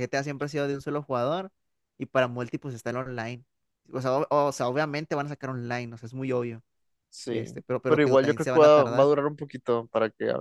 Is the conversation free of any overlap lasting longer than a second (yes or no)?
no